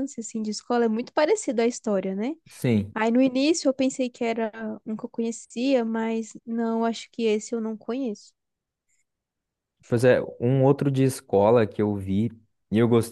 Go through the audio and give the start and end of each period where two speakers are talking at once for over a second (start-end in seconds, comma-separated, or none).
none